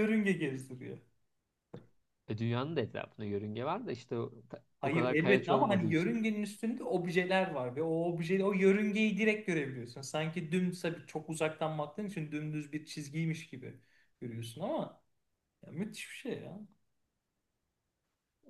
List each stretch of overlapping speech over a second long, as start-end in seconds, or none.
4.8-6.3